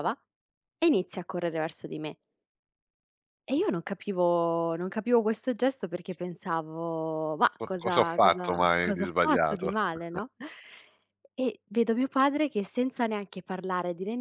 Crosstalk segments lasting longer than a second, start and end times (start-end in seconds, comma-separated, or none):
7.6-9.7